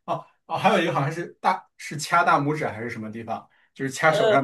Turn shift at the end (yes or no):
no